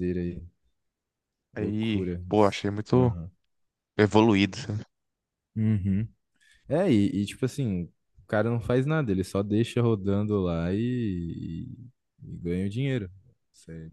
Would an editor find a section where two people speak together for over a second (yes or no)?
yes